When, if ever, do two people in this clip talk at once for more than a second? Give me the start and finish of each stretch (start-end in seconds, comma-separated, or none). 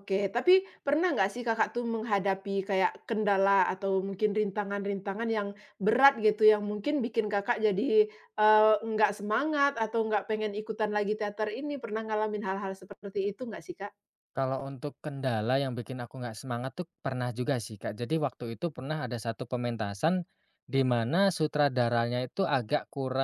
none